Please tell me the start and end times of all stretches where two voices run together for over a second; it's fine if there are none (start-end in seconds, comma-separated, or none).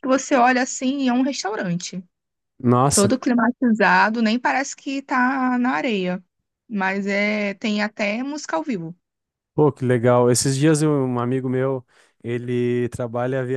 none